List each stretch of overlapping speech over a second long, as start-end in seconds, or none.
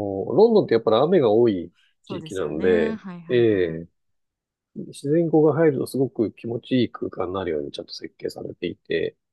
2.0-3.8